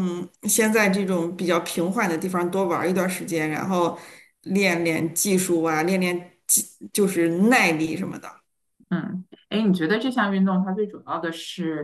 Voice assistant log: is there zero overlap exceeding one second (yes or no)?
yes